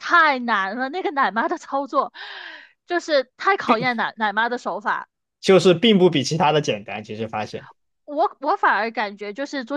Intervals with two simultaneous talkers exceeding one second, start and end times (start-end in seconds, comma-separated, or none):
none